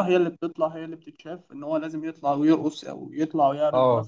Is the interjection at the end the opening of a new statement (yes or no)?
yes